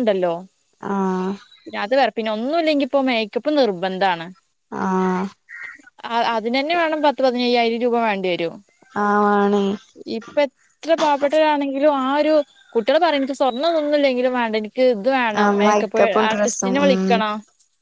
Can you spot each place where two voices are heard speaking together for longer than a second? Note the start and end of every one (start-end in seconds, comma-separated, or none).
15.4-17.0